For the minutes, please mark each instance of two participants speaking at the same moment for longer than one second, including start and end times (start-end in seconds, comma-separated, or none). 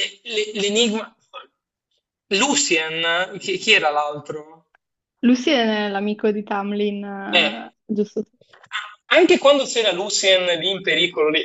none